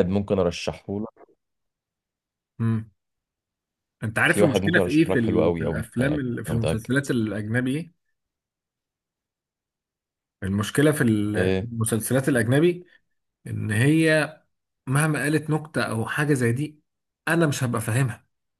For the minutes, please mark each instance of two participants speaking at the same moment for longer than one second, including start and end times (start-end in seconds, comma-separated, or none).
4.2-6.9